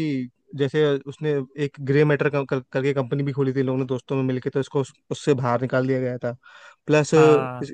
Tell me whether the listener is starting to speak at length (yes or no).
no